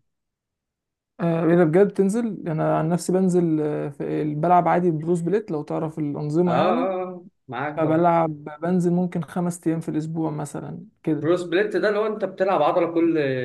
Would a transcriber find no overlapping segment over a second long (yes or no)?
yes